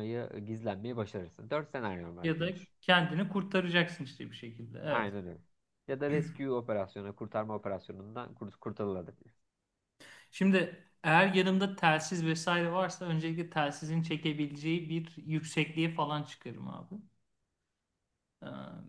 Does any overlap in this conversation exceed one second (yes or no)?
no